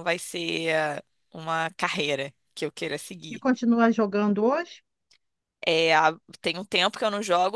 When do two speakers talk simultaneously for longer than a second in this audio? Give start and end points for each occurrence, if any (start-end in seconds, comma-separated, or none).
none